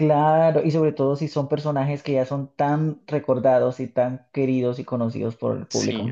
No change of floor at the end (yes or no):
no